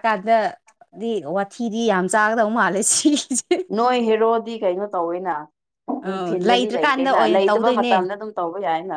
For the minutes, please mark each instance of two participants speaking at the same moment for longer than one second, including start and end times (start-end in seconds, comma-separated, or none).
6.1-7.9